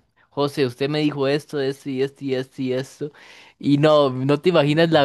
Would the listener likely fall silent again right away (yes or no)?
yes